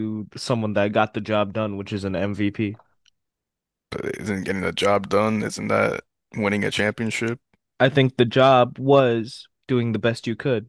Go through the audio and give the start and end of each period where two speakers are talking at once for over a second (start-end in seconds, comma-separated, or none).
none